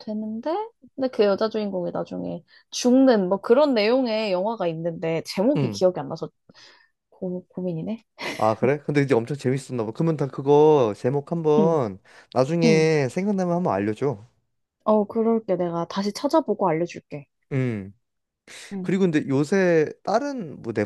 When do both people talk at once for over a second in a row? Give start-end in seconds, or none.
none